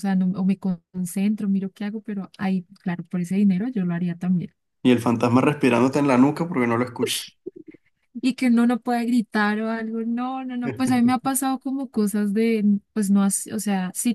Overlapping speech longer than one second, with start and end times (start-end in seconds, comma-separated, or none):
none